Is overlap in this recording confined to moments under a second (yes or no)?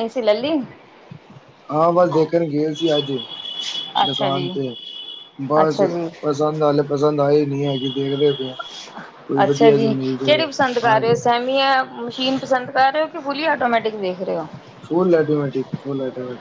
yes